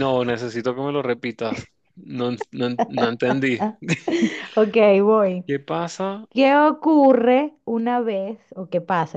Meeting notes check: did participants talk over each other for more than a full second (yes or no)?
no